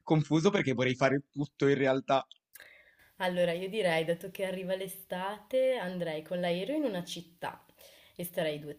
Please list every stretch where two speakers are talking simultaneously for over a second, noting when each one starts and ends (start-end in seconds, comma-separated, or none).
none